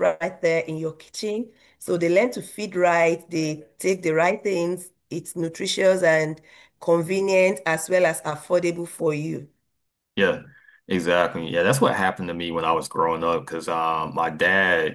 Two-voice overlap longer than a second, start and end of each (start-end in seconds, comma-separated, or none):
none